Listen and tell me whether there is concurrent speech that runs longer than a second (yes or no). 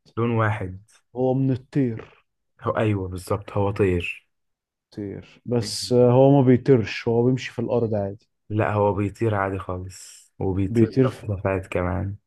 no